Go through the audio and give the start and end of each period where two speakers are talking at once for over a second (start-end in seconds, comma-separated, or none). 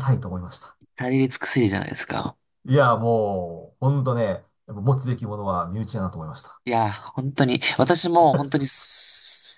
none